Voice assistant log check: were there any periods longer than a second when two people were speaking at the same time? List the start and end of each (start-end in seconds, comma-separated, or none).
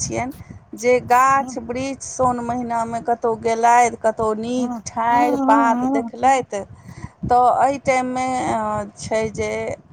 4.6-6.1